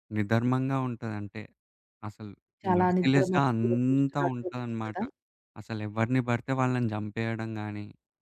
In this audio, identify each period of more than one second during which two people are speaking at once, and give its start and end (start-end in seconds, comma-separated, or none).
2.8-5.0